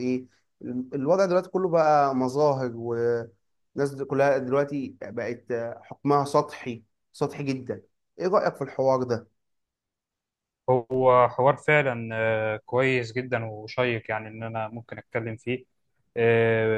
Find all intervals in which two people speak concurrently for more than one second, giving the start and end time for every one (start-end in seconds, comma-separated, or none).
none